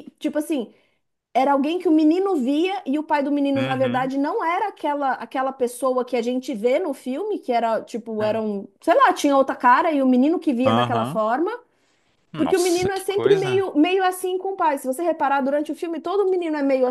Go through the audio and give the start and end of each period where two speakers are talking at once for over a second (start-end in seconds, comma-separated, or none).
12.4-13.6